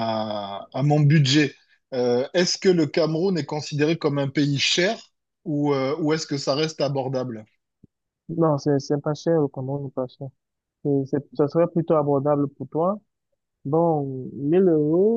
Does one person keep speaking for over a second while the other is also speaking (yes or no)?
no